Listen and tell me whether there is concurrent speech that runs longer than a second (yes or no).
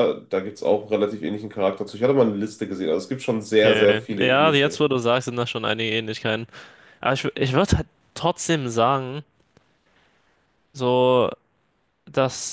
yes